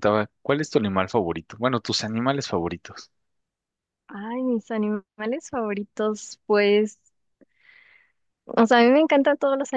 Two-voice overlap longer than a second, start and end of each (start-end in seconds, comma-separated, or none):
none